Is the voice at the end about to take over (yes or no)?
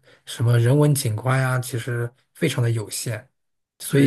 yes